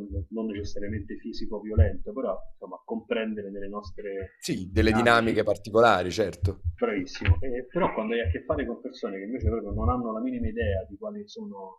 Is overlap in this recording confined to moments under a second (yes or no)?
yes